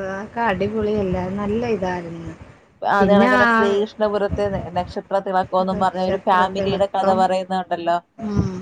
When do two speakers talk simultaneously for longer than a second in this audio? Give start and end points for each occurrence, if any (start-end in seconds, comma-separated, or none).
5.7-7.2